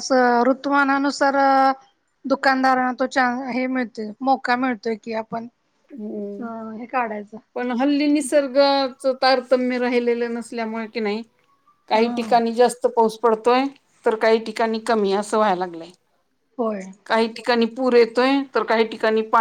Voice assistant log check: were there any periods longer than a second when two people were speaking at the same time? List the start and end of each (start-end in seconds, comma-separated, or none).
none